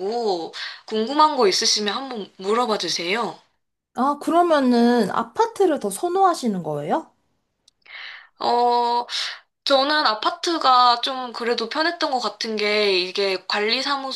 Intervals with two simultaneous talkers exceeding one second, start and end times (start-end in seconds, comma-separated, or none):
none